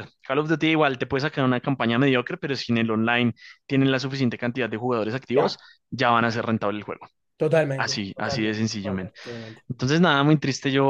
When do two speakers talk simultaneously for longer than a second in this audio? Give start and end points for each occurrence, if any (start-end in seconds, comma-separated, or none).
7.8-9.1